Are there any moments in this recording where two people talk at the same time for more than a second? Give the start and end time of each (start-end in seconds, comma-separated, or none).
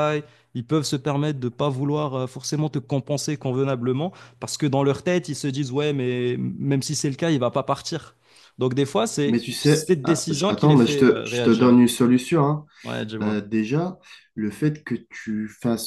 9.3-11.8